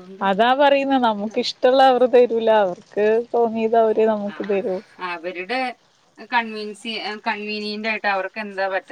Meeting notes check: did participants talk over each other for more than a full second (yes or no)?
no